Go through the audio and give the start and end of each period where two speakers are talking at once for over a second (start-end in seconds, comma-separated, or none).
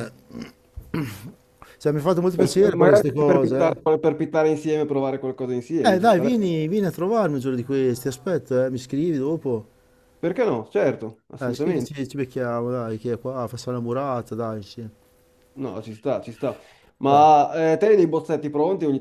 2.3-3.9